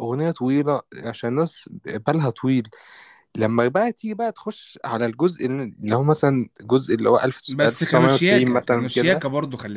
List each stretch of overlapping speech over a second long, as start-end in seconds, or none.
7.5-9.2